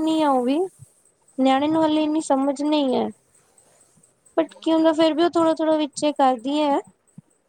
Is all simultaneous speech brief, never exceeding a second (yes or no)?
no